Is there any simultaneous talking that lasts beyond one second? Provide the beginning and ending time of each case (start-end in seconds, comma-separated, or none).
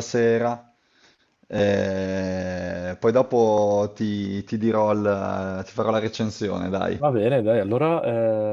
none